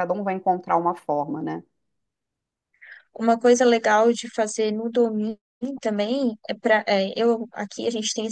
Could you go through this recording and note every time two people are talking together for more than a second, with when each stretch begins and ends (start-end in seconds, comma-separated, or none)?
none